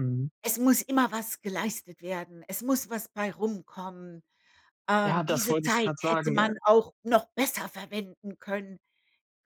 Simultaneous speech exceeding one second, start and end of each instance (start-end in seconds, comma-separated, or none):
5.0-6.5